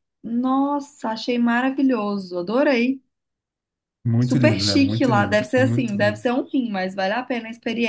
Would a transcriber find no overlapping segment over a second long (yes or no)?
no